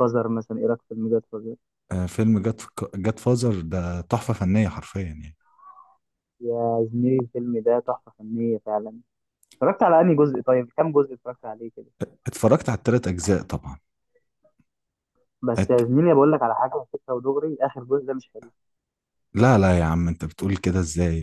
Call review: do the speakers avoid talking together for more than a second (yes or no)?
yes